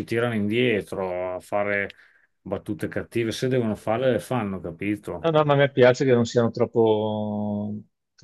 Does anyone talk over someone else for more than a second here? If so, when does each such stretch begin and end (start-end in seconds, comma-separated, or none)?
none